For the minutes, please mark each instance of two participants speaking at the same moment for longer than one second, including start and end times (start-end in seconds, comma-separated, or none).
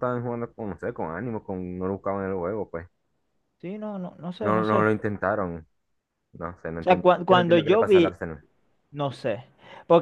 6.8-8.2